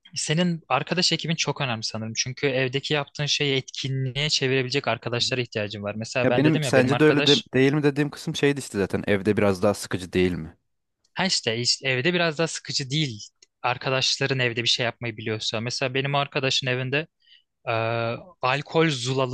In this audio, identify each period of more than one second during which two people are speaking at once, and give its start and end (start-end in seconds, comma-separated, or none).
6.2-7.5